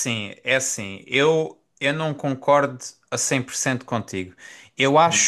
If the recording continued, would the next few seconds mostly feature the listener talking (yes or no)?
no